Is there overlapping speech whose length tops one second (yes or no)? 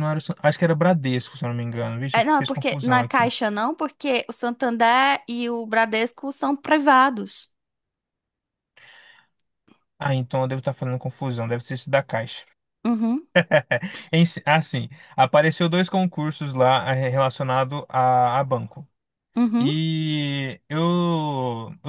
yes